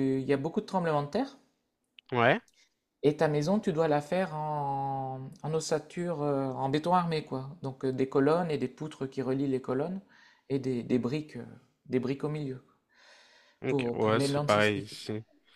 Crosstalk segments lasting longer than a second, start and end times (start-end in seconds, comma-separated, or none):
13.7-15.0